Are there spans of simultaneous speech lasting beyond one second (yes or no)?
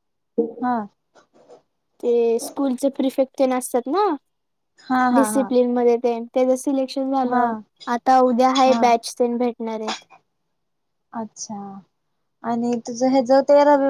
no